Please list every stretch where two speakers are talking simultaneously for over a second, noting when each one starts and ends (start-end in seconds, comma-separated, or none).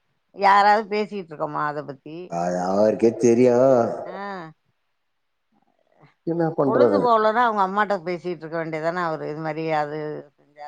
none